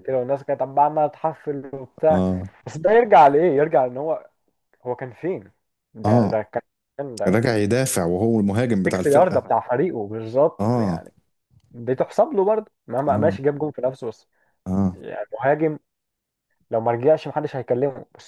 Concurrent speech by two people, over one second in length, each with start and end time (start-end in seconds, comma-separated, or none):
none